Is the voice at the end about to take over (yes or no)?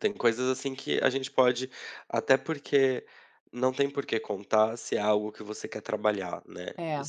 no